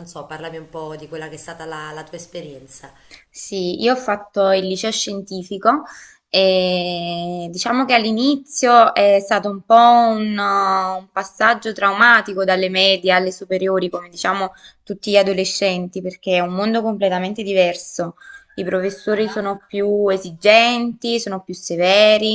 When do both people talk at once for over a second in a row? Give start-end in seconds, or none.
none